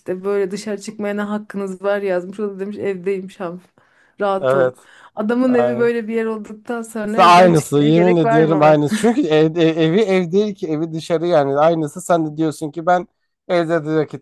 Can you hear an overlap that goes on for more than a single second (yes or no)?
yes